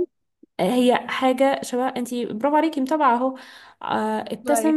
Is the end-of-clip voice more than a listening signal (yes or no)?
no